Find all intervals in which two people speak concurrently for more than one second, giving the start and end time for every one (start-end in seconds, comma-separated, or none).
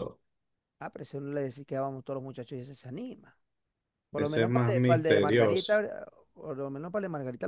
4.2-5.8